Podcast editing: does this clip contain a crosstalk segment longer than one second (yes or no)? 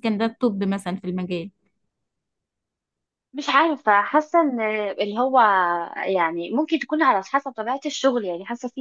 no